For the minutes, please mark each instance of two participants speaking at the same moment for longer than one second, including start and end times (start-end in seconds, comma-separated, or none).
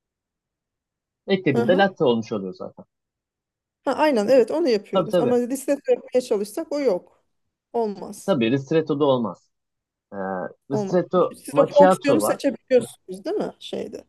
10.8-12.4